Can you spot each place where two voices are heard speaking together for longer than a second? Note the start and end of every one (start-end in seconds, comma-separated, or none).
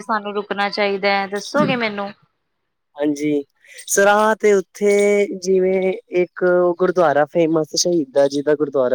none